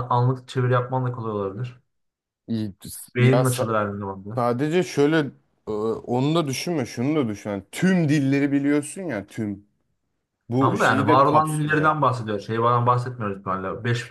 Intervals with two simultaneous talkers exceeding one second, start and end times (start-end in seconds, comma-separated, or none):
10.6-11.9